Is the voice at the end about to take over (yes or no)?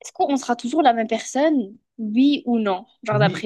yes